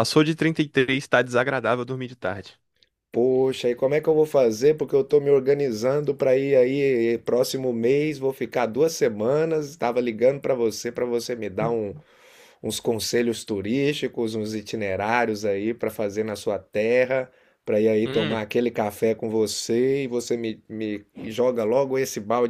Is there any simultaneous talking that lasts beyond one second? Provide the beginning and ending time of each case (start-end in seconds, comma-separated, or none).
none